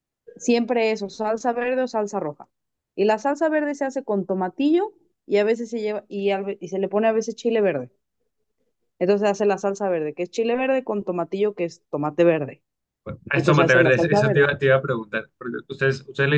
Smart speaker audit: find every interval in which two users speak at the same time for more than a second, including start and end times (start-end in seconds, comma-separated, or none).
13.3-14.6